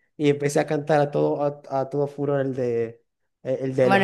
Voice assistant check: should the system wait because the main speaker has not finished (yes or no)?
no